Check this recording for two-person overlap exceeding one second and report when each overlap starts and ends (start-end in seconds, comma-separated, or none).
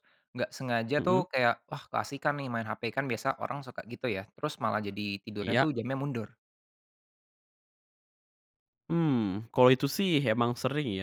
none